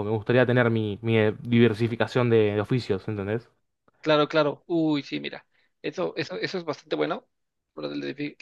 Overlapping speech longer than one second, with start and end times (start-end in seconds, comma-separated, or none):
none